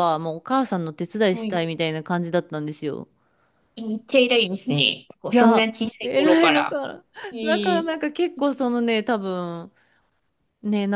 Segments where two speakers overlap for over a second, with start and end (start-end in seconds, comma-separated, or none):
5.3-6.8